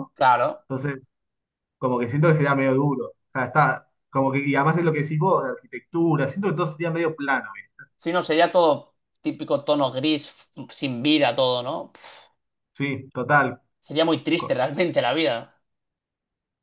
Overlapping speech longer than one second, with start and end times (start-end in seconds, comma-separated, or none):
none